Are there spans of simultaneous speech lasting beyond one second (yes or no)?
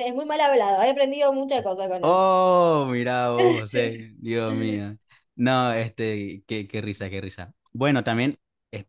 no